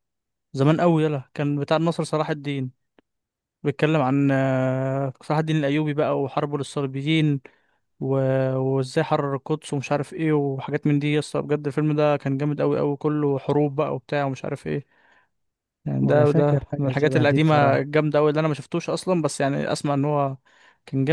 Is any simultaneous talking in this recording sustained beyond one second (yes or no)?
yes